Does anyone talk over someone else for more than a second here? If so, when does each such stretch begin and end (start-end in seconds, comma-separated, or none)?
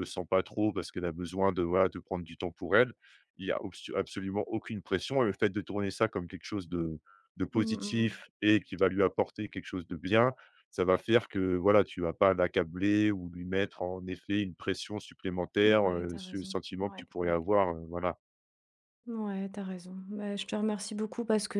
15.6-17.5